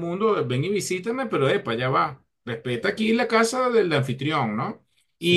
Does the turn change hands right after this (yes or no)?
no